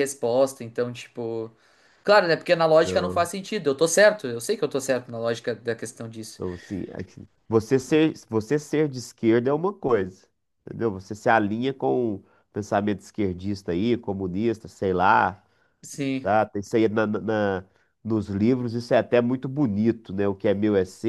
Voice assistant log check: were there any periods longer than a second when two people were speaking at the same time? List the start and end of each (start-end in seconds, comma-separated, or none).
none